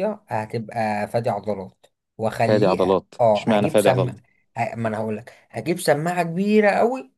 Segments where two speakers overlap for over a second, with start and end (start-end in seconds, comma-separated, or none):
2.5-4.1